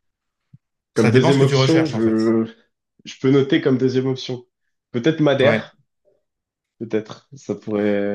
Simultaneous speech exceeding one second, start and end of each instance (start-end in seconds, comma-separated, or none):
0.9-2.3